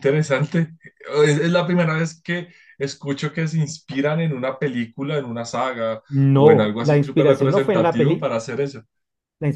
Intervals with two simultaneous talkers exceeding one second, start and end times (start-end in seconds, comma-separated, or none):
6.1-8.3